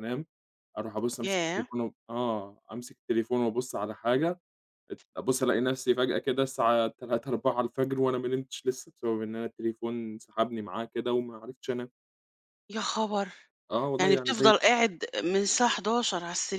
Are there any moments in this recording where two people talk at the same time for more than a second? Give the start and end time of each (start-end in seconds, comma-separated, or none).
none